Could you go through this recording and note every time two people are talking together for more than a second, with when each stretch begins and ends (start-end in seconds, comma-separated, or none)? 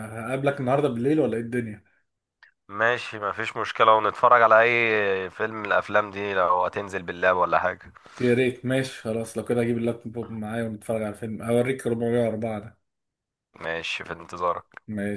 none